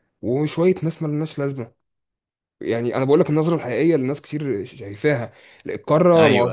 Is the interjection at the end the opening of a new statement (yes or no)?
no